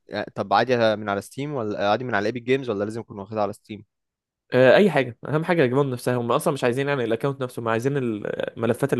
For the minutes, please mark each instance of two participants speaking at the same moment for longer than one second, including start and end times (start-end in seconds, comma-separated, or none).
none